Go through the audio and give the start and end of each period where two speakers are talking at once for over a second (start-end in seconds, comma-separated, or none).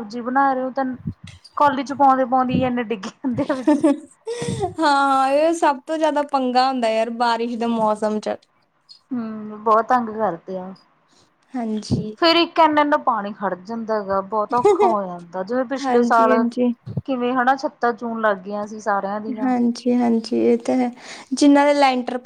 none